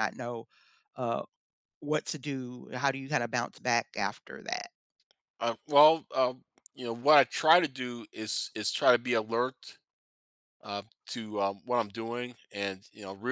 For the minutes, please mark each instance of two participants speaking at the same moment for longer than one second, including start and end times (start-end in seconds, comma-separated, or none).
none